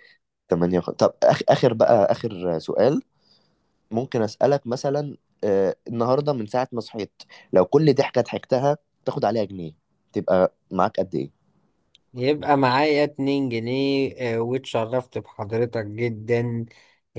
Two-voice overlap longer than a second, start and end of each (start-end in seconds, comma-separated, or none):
none